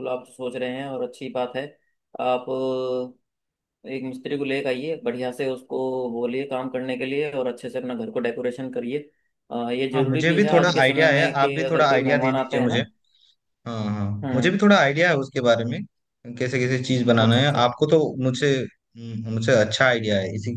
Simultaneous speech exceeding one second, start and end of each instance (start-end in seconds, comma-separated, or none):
9.9-12.8